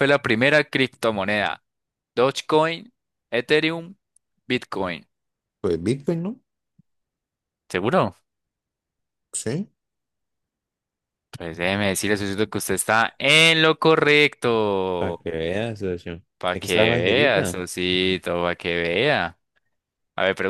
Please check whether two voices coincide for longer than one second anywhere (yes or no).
yes